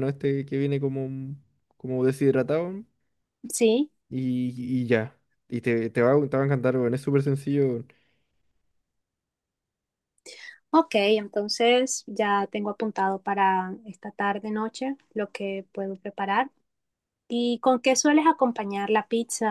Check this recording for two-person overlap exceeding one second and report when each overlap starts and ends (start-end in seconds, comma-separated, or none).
none